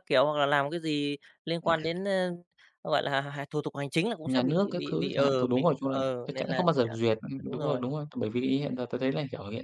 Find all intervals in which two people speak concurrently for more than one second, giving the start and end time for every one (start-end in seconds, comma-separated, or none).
4.2-7.8